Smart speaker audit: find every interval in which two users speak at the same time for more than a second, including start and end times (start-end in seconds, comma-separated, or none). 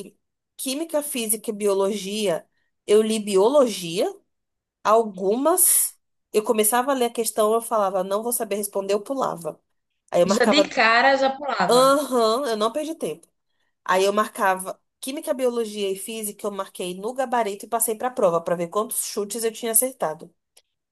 none